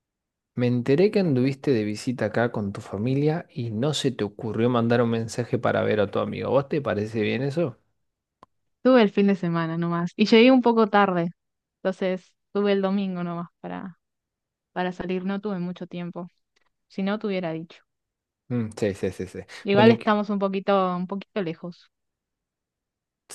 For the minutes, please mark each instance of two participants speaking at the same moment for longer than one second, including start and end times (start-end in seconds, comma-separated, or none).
none